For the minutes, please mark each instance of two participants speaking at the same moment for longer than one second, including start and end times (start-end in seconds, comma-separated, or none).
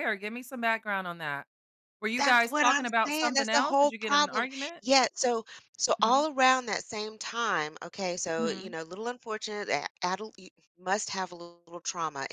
2.2-4.8